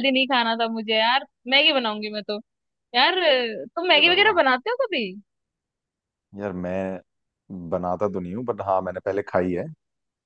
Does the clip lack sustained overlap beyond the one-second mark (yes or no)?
yes